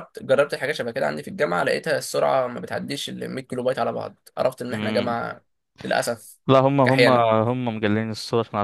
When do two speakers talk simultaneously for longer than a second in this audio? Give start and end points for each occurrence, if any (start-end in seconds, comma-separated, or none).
none